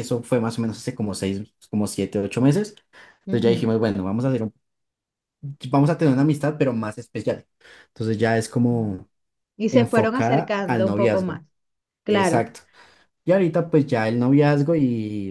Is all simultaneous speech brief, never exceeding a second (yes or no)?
no